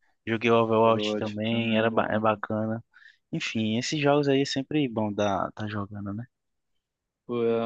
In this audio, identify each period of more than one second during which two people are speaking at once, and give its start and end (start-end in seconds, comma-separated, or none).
0.8-2.2